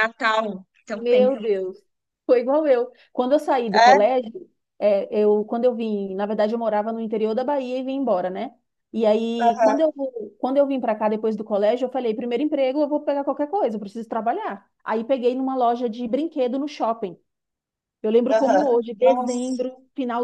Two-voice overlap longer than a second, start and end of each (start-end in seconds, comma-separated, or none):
18.3-19.6